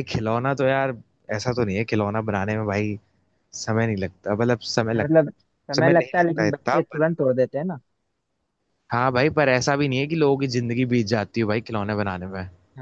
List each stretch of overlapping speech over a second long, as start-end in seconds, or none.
5.8-7.0